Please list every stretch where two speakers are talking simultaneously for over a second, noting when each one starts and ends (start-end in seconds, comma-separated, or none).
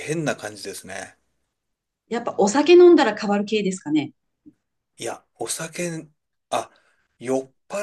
none